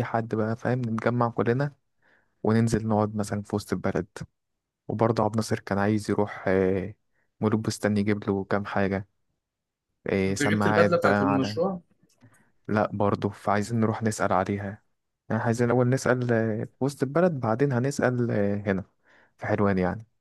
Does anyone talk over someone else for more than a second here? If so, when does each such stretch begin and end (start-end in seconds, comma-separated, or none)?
10.3-11.6